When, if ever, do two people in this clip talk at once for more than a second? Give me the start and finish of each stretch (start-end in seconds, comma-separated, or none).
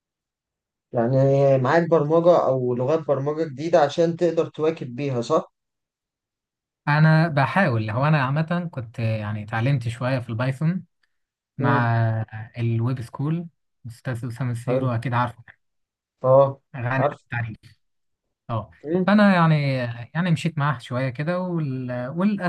none